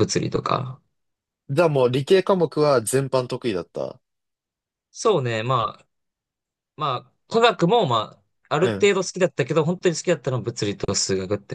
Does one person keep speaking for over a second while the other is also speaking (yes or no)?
no